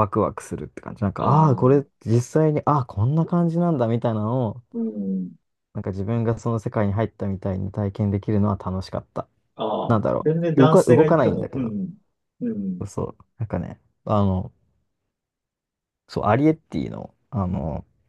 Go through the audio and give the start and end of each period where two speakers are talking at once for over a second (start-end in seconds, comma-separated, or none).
9.9-11.7